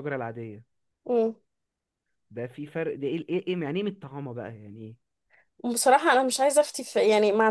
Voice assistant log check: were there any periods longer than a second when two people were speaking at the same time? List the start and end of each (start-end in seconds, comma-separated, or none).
none